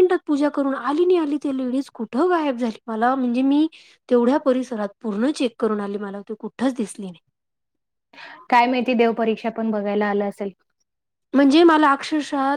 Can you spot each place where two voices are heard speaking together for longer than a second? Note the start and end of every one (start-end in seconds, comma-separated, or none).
none